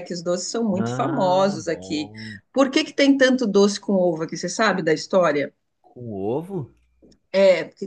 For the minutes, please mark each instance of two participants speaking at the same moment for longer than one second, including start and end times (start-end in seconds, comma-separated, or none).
0.8-2.1